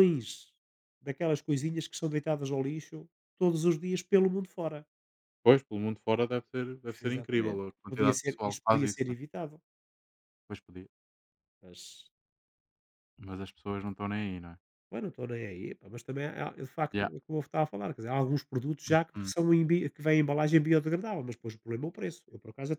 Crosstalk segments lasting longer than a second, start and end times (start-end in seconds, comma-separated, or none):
7.1-9.2